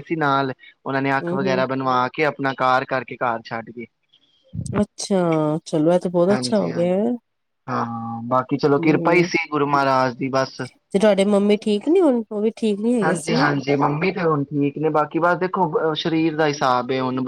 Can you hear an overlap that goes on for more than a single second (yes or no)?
no